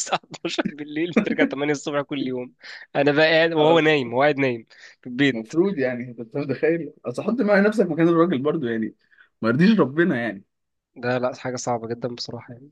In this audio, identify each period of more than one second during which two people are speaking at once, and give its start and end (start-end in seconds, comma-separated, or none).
none